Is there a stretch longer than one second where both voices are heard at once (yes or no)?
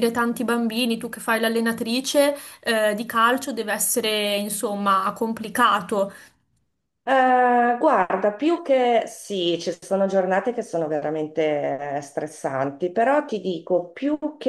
no